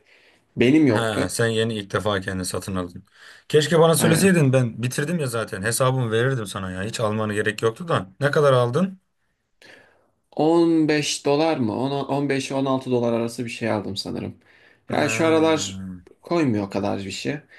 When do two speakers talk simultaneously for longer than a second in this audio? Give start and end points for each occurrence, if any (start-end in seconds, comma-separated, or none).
none